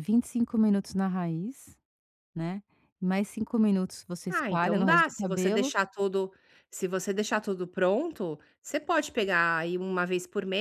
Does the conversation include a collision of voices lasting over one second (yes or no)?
yes